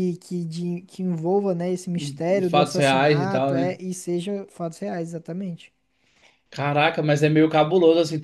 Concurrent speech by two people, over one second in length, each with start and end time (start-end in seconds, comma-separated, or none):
2.5-3.8